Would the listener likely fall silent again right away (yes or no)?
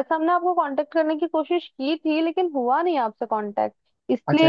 no